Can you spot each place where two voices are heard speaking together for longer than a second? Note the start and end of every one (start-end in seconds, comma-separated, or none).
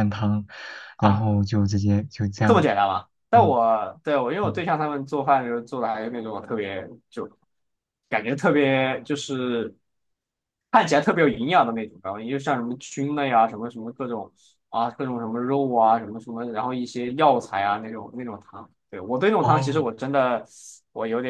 none